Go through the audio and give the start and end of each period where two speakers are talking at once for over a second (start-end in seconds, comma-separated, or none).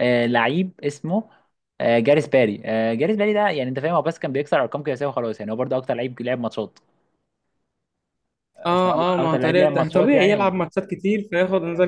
8.7-10.6